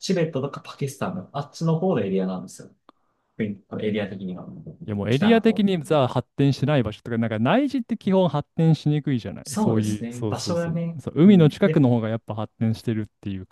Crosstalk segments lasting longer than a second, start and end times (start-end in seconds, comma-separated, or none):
9.4-11.8